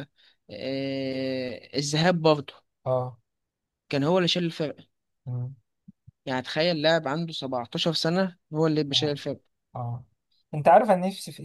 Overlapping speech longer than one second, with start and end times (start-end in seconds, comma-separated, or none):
none